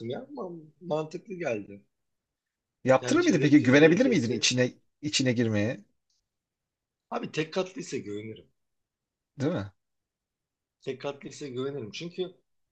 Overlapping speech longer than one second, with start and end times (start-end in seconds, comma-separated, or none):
3.0-4.5